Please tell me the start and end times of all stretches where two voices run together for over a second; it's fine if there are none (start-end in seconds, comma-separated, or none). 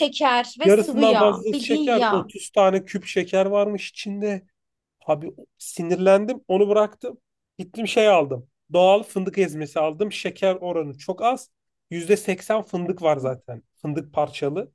0.6-2.3